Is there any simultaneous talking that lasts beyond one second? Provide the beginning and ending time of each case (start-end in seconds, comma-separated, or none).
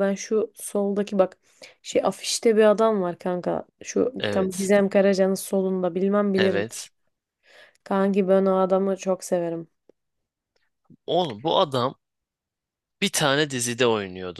none